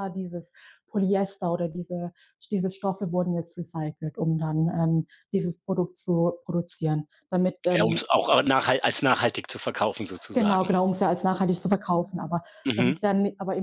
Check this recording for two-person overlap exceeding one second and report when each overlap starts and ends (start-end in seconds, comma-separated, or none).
none